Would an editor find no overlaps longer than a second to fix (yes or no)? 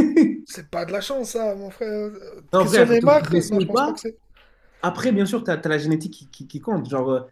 no